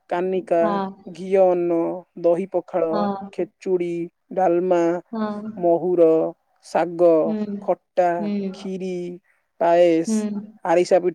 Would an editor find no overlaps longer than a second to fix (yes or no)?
yes